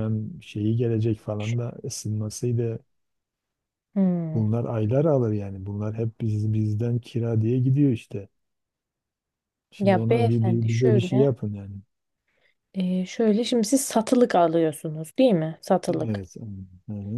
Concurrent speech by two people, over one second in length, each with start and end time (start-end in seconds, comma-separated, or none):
9.8-11.3